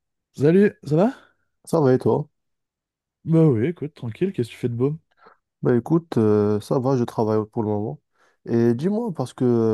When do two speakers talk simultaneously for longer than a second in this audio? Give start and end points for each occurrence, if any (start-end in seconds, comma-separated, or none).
none